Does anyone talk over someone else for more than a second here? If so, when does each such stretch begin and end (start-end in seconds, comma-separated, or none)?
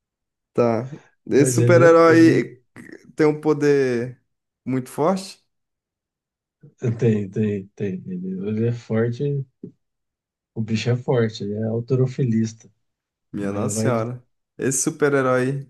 1.3-2.5